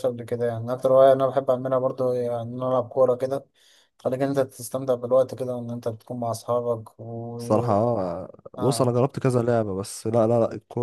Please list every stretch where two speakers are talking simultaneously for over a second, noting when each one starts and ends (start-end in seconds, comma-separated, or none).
none